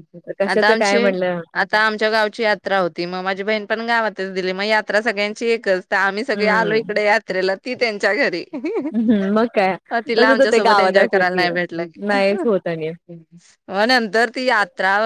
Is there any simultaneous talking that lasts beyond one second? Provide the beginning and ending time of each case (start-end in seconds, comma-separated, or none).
10.2-11.5